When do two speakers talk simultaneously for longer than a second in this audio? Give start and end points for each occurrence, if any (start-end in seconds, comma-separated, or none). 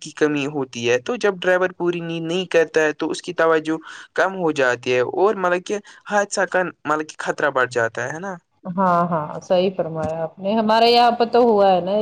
none